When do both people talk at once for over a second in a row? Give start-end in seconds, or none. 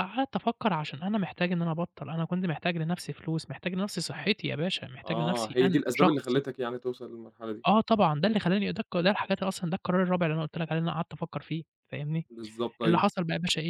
5.0-6.4